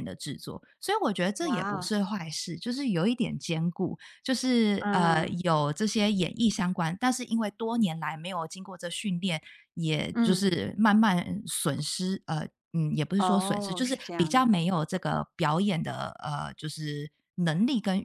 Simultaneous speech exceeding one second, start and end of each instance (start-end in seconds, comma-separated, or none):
13.2-14.5